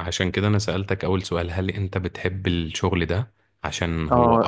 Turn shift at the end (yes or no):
yes